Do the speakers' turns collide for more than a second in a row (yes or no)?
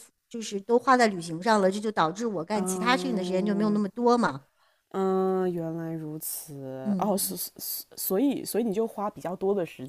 yes